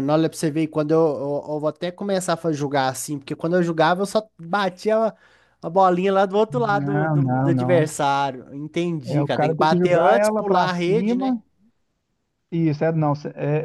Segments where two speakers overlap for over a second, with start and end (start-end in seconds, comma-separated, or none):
6.5-7.9, 9.1-11.3